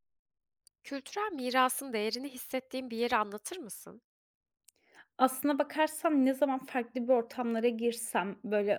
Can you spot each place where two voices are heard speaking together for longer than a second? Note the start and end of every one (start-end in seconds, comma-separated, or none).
none